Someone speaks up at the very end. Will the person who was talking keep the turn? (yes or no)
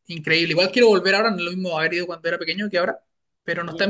yes